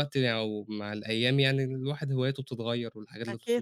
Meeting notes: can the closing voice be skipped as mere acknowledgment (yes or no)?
no